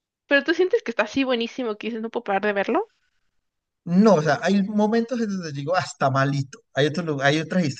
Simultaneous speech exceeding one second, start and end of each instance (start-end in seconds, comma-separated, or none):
none